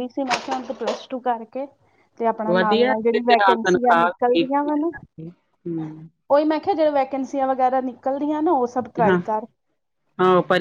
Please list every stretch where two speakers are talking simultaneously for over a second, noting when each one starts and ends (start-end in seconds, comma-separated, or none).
2.5-4.9